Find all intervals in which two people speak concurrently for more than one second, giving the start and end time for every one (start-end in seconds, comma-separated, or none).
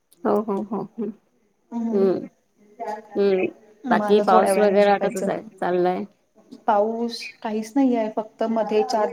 3.9-5.3